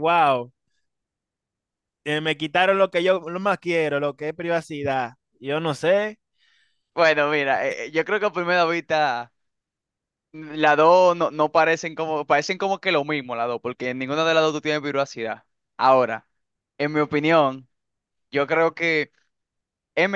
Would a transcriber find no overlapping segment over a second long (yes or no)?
yes